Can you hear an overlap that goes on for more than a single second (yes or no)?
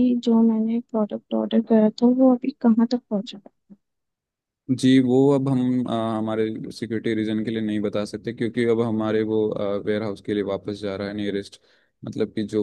no